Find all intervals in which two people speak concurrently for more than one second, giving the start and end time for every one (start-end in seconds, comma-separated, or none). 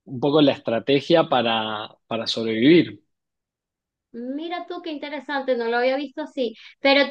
none